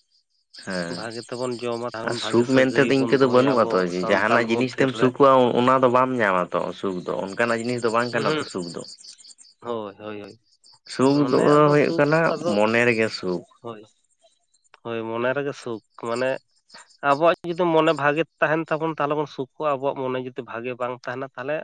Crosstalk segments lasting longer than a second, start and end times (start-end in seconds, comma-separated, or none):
2.1-5.1